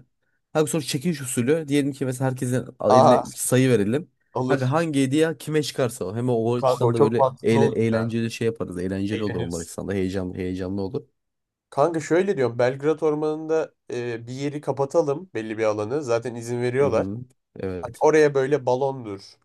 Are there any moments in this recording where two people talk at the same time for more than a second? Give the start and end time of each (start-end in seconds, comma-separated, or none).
6.5-8.1